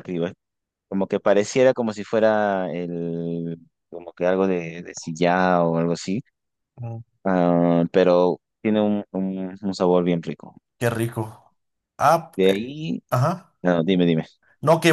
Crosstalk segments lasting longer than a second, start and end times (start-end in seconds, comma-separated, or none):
none